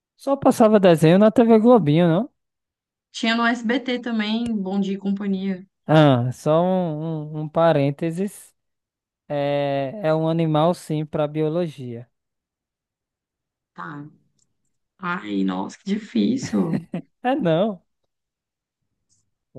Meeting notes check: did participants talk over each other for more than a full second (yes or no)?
no